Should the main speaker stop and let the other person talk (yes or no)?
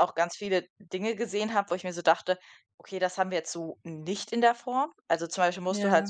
no